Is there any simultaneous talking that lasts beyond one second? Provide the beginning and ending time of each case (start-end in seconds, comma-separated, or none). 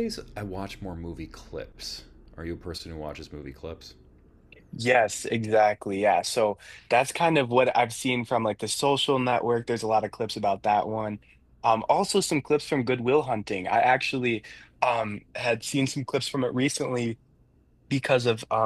none